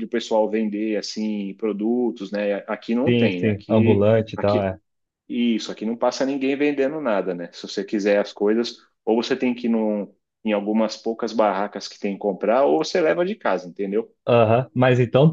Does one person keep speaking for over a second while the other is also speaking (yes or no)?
yes